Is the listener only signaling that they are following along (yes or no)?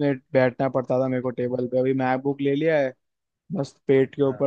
yes